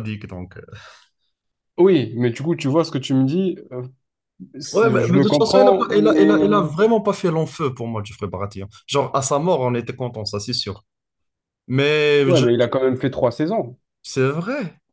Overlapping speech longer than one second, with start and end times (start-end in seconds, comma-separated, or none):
4.7-6.7